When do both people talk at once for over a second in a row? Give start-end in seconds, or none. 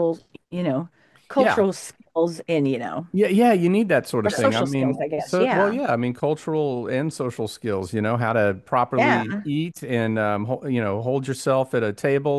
4.2-5.8